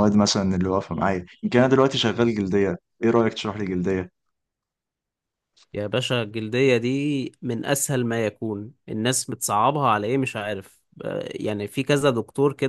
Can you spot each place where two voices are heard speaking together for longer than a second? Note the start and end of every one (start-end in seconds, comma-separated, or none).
none